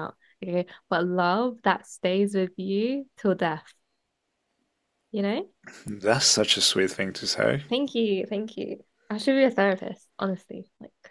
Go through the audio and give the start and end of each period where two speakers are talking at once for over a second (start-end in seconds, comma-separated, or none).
none